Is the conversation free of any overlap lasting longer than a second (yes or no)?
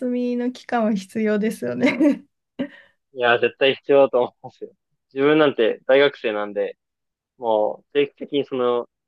yes